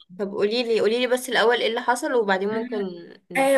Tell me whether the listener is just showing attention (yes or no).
no